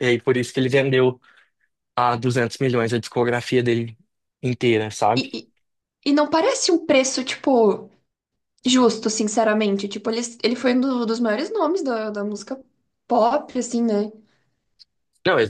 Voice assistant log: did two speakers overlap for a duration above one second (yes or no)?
no